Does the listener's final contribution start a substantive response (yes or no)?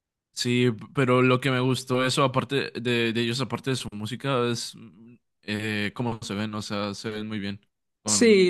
yes